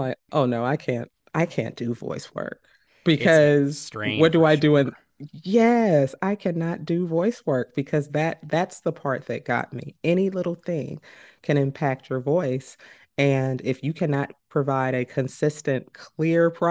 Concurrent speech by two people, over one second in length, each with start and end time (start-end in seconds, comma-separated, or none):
3.2-4.9